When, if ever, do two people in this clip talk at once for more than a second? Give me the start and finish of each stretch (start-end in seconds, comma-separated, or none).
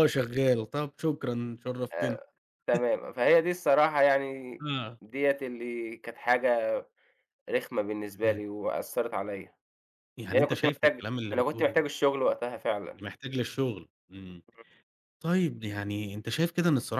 10.3-11.8